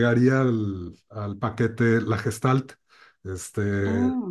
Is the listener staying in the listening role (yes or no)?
yes